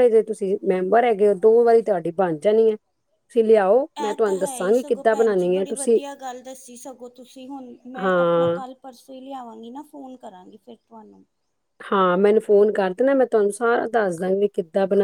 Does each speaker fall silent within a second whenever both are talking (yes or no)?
no